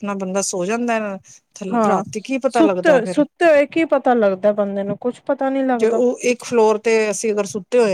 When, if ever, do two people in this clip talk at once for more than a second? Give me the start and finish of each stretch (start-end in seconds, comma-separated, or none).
none